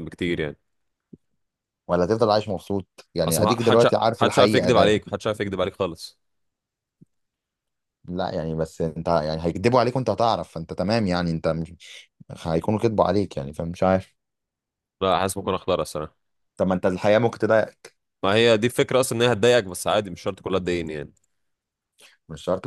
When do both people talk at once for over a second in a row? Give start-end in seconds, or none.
3.2-5.0